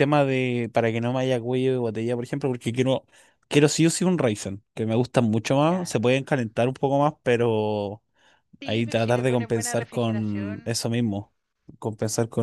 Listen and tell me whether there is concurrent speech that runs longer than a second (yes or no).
yes